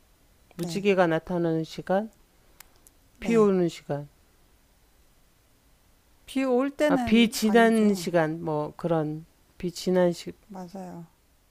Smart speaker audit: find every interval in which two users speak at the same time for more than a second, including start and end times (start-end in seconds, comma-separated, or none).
6.9-8.1